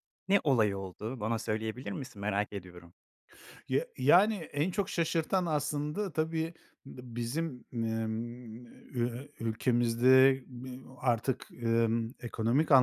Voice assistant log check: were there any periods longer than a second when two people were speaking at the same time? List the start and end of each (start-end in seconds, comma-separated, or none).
none